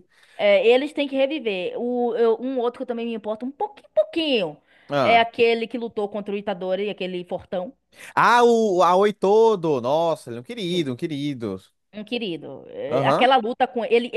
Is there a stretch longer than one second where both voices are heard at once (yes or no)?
no